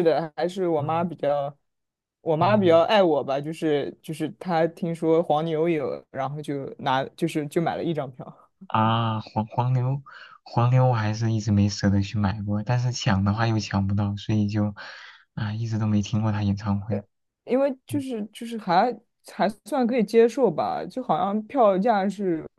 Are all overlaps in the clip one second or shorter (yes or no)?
yes